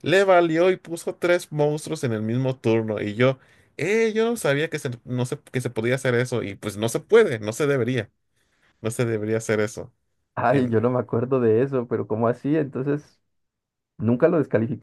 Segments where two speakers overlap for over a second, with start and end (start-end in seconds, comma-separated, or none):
none